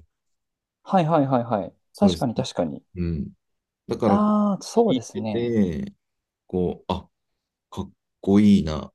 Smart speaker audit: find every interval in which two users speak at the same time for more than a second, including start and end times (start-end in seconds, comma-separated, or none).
4.0-5.5